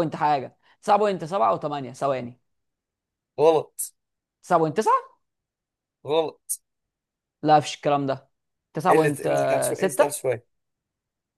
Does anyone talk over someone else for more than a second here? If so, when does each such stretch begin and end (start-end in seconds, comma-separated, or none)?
8.9-10.2